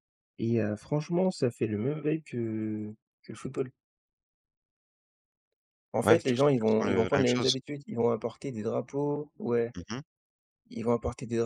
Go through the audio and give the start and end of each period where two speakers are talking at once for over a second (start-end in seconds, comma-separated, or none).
6.0-7.5